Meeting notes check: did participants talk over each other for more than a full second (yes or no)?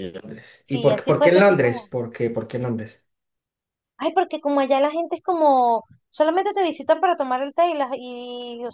yes